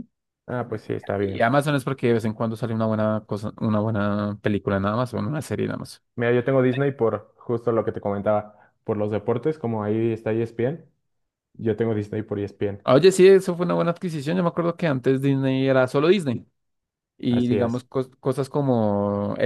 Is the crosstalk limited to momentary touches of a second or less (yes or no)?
yes